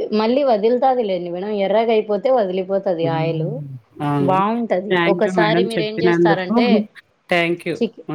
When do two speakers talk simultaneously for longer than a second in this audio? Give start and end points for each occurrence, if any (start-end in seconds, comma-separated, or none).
5.1-6.6